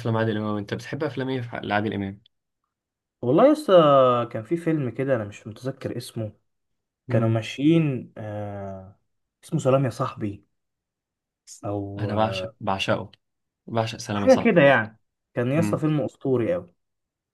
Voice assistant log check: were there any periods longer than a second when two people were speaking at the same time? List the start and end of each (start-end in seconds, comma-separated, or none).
none